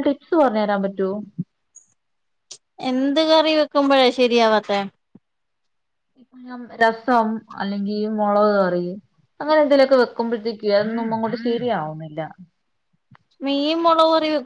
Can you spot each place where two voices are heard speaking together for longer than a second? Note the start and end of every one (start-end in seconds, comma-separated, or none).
none